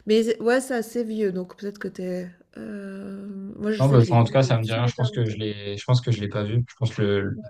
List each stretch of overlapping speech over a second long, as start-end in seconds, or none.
3.8-5.4